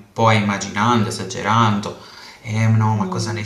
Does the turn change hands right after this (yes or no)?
no